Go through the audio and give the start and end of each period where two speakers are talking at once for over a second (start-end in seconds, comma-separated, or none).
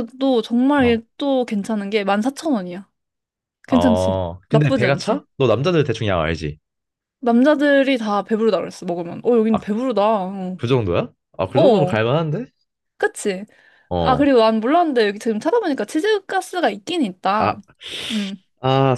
3.7-5.2